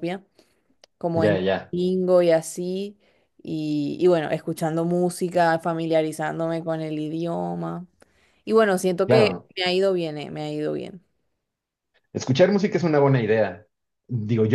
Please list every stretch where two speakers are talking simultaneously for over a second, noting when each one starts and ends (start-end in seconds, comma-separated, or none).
none